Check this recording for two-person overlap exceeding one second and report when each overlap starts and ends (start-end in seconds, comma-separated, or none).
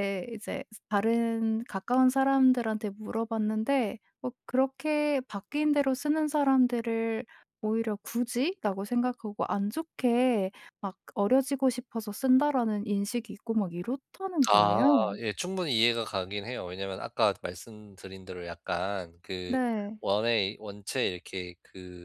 none